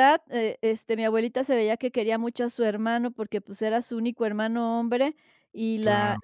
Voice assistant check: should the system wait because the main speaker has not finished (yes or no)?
yes